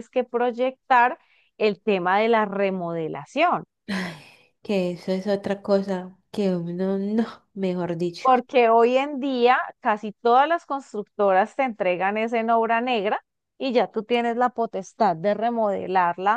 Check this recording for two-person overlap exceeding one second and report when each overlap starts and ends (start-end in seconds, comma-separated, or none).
none